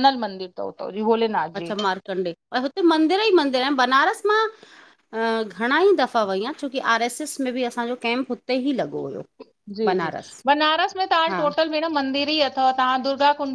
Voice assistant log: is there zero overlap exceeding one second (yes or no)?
yes